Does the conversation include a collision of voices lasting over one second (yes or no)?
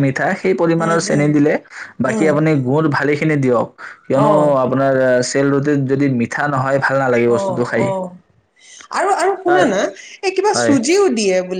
no